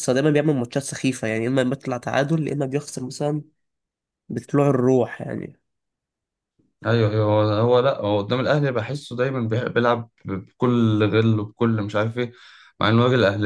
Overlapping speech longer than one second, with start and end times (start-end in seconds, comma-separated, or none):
none